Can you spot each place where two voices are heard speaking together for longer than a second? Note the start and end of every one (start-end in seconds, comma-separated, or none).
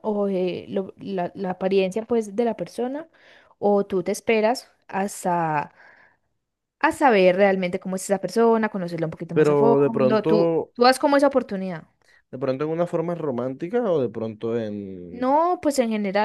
9.3-10.7